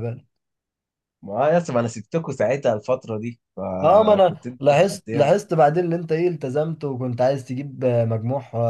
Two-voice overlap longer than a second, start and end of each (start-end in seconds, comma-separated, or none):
3.8-5.3